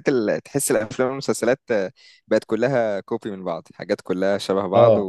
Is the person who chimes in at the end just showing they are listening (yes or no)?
yes